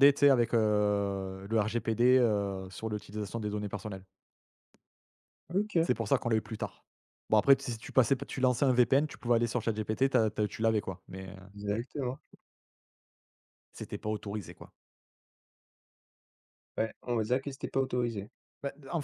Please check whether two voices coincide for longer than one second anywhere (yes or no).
no